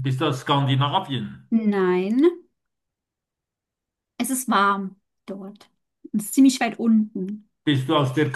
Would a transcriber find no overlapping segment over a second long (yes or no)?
yes